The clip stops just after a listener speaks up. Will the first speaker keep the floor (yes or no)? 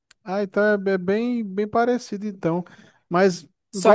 no